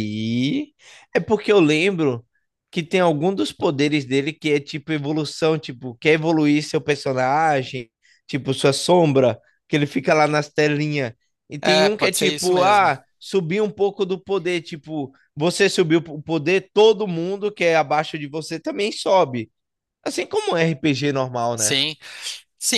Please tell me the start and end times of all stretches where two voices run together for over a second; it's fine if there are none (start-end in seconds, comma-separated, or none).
11.6-12.9